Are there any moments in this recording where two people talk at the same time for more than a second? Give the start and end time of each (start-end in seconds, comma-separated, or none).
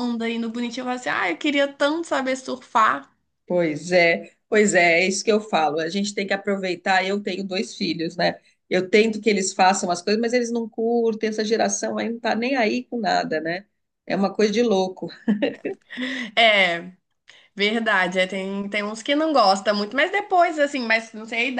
none